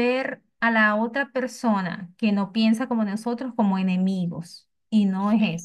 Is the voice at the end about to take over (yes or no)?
no